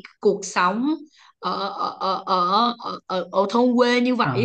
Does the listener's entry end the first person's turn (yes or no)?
yes